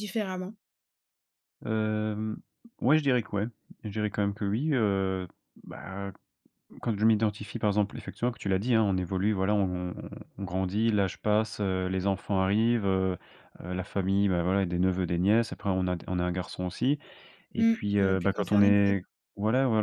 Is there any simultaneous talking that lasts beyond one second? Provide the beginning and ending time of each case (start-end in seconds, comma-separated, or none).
17.6-19.0